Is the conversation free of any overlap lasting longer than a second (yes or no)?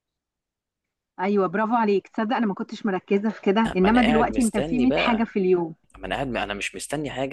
no